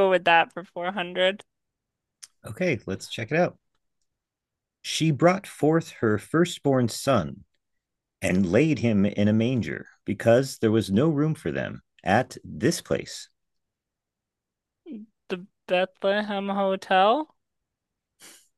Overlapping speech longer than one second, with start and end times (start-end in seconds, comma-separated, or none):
none